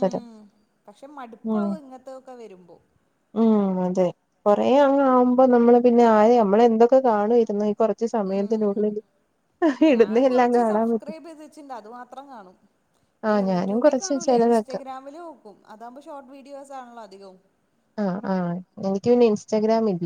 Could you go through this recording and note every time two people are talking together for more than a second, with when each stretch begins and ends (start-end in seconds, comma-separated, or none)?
13.3-14.8